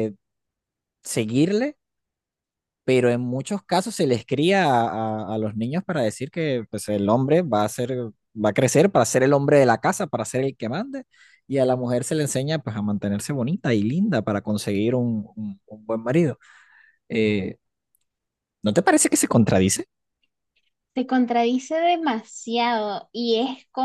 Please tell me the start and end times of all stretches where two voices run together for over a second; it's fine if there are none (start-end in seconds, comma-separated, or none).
none